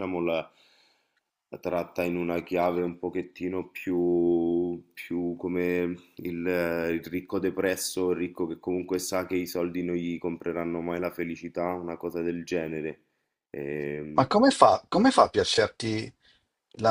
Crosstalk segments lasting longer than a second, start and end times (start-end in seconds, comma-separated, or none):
none